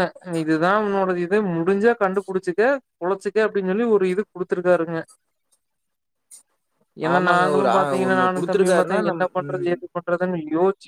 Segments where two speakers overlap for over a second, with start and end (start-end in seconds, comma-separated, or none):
7.1-9.7